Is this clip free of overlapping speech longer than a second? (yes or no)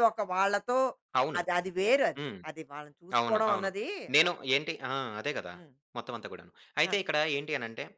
yes